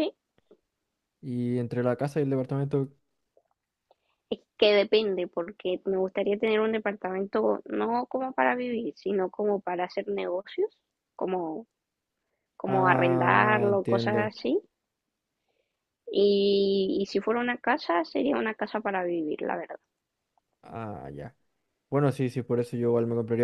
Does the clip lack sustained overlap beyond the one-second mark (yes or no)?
no